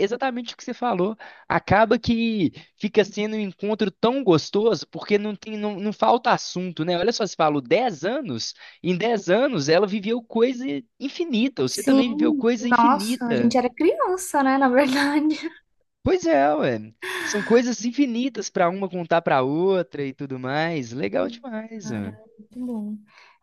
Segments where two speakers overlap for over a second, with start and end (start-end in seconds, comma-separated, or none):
11.7-13.5